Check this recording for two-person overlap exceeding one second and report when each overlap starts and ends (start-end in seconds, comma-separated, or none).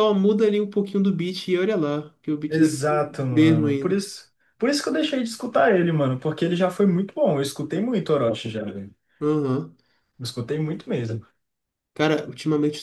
2.5-4.0